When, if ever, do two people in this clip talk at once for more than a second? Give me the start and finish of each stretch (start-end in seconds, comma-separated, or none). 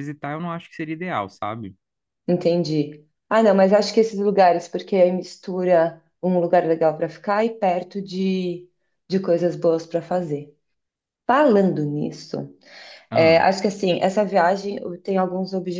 none